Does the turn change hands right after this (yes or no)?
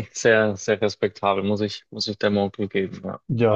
yes